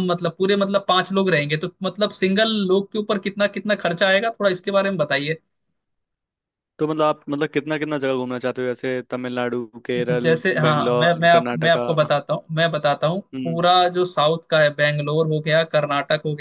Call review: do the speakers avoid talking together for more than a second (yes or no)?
no